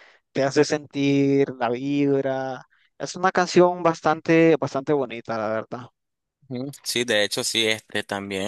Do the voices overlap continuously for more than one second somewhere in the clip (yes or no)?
no